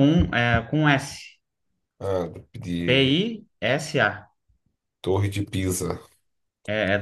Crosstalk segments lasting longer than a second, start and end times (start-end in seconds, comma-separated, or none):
none